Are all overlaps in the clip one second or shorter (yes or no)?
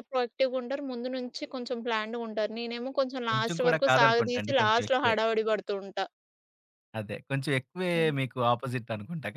no